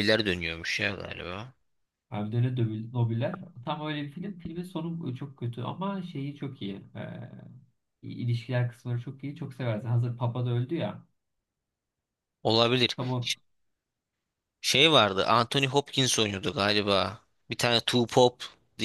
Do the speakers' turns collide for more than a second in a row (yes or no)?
no